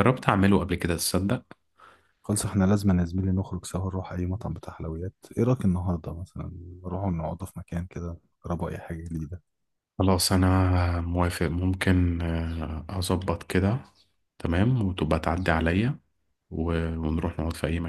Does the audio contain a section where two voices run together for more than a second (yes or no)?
no